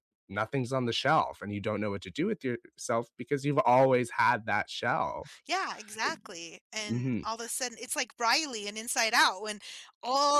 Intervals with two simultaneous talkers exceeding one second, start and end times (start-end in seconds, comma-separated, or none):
none